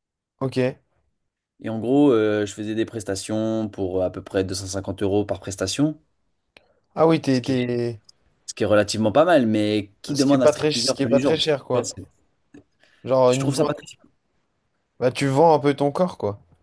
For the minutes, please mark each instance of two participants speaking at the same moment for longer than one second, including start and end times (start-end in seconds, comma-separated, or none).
10.1-11.9